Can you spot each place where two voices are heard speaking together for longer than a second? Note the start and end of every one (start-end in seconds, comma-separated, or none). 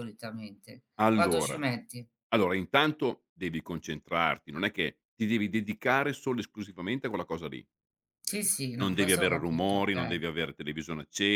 8.8-10.2